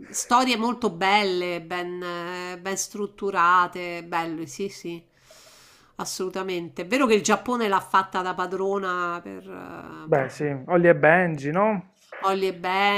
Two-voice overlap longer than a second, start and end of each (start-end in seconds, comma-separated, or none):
none